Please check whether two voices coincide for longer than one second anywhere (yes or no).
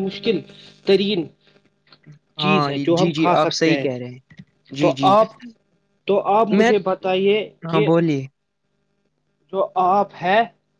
yes